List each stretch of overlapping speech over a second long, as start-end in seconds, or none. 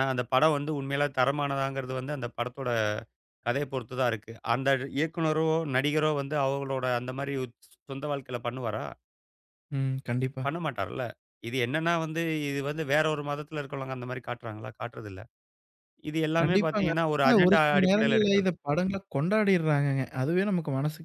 16.4-18.5